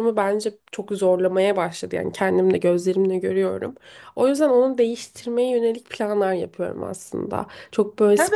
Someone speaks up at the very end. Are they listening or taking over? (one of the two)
taking over